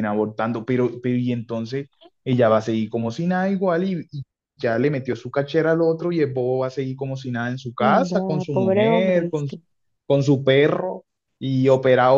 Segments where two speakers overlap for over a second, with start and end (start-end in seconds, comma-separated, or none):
7.8-9.6